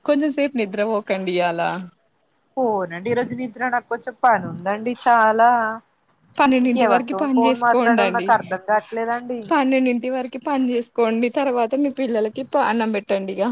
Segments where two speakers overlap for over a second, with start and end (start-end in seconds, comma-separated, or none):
6.7-8.3